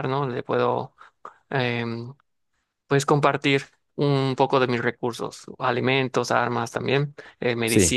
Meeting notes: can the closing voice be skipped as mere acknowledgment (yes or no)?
yes